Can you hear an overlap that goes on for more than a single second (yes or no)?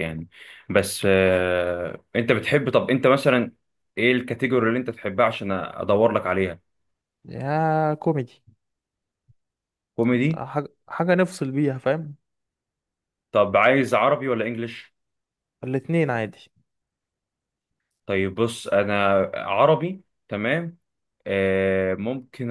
no